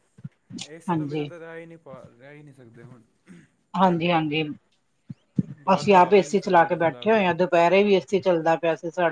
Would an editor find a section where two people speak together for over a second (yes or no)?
yes